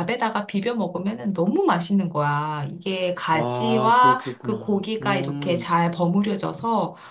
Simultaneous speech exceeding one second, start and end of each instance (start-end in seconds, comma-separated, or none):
3.3-5.7